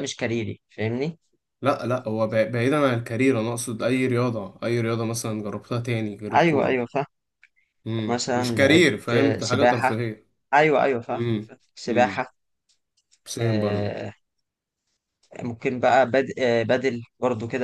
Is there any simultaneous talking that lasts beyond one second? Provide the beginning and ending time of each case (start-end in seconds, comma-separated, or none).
8.1-9.9